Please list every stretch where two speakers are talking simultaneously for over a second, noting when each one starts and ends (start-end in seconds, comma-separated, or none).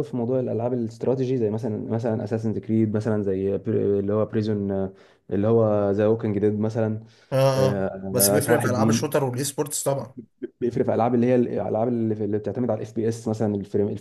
7.6-9.1